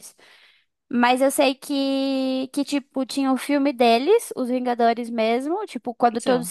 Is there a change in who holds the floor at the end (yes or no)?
no